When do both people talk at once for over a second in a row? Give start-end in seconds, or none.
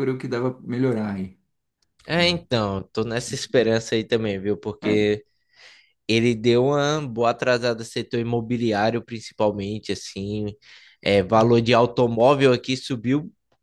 none